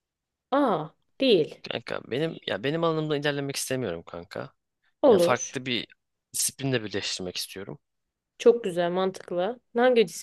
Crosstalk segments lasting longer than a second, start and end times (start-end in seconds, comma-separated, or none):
none